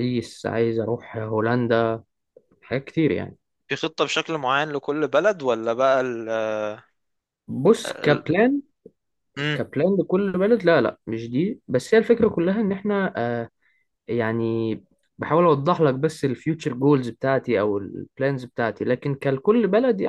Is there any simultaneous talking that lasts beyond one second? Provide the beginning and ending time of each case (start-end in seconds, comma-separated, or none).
none